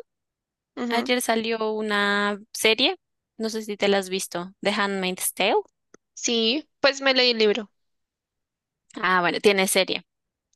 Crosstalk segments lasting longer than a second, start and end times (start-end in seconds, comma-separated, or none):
none